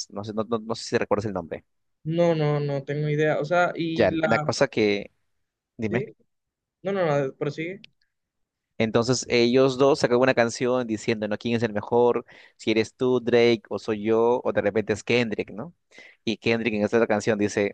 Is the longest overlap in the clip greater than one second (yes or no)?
no